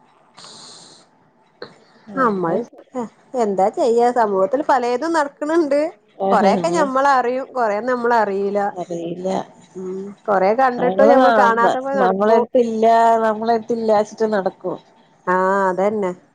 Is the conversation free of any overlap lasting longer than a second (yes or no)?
no